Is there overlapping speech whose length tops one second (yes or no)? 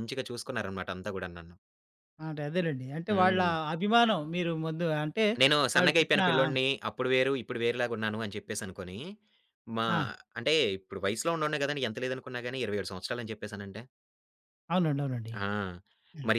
no